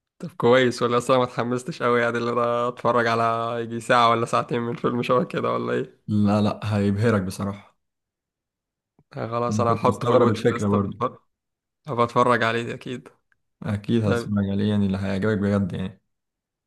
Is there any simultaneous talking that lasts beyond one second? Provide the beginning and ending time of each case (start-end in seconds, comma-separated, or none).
9.5-11.0